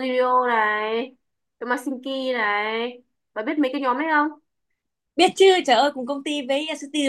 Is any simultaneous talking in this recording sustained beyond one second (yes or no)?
no